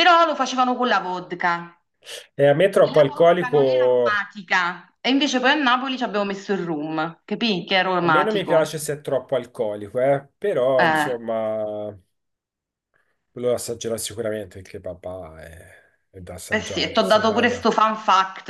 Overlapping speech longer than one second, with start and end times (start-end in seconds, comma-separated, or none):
2.8-4.2, 16.5-17.7